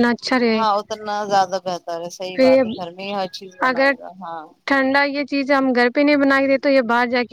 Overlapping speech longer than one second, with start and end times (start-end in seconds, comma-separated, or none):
none